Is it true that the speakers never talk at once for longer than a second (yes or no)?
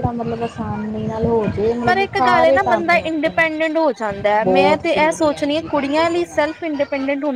no